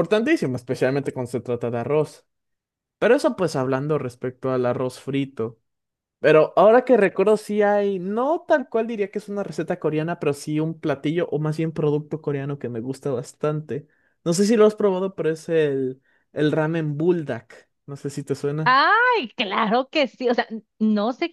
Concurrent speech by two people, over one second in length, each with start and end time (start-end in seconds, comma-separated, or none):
none